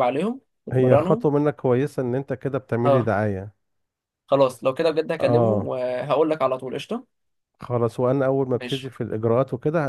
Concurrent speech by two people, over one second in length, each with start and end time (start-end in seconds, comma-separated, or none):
none